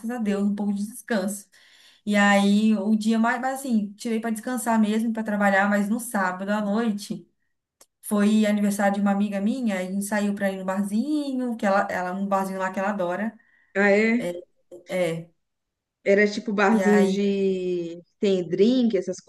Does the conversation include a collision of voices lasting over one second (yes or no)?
no